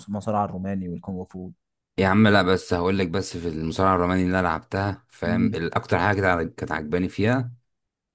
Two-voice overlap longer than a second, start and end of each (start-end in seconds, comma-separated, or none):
none